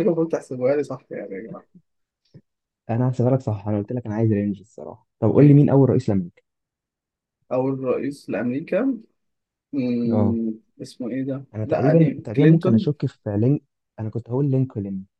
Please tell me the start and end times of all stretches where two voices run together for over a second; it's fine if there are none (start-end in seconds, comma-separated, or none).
11.6-12.9